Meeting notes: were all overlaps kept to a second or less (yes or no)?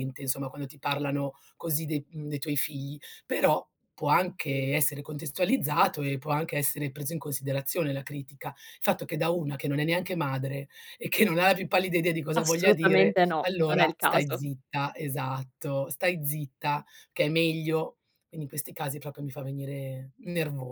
no